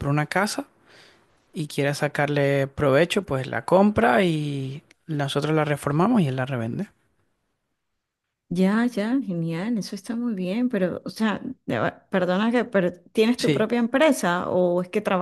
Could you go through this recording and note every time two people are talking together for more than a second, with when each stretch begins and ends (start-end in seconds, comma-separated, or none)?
none